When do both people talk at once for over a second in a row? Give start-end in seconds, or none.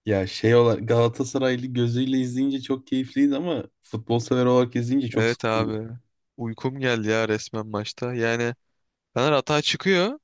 none